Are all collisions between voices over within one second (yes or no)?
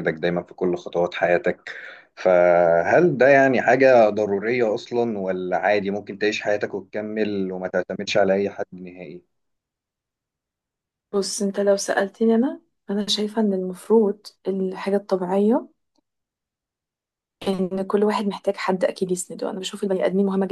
yes